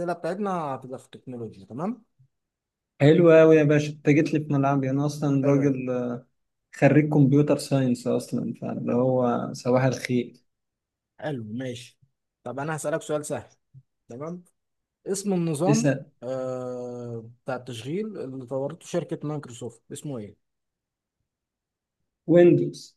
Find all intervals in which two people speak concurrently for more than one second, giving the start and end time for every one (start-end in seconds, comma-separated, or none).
none